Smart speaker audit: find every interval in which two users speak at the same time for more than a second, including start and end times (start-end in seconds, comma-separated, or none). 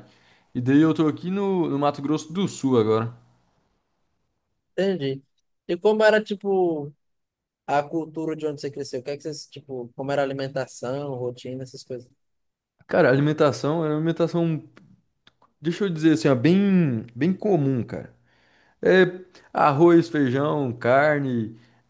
none